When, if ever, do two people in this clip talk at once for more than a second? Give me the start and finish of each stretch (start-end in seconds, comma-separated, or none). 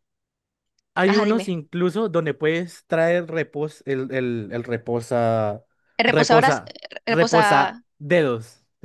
6.1-7.8